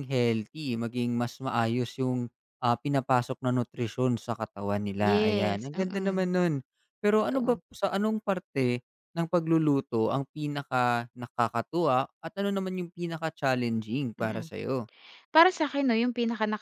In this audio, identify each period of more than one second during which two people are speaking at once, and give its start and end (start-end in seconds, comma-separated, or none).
5.0-6.3